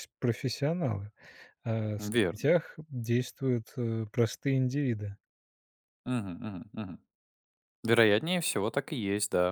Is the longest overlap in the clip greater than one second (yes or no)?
no